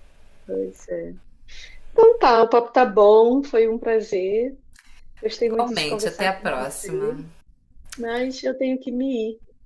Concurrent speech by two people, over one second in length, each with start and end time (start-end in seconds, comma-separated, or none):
5.5-7.2